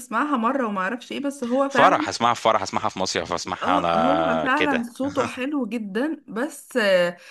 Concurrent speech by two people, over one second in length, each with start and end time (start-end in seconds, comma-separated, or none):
3.6-4.9